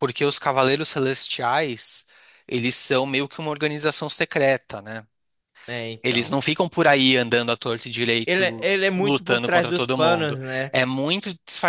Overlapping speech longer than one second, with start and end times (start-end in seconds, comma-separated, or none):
8.2-10.7